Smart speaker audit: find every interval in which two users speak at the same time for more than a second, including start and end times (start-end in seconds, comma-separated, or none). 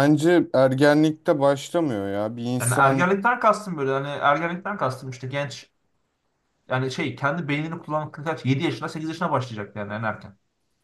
none